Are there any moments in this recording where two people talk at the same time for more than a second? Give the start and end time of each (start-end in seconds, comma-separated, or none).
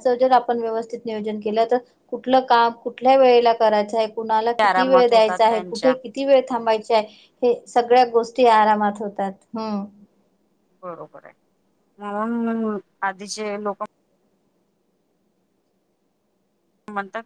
4.7-5.9